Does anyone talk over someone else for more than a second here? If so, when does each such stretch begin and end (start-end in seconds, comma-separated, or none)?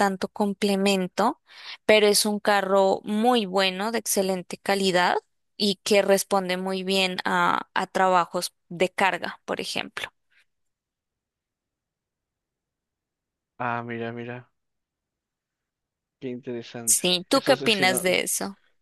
16.8-18.2